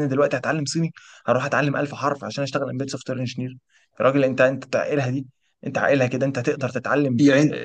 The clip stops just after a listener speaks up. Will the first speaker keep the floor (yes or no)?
no